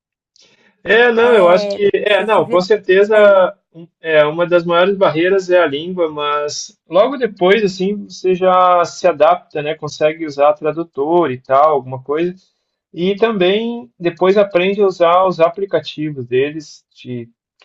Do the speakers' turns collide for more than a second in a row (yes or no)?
yes